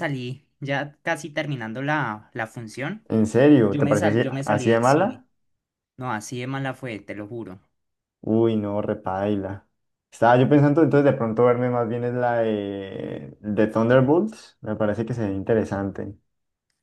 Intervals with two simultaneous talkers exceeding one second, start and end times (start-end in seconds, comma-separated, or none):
3.7-5.2